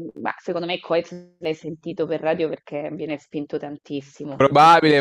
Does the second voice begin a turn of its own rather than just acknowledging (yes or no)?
yes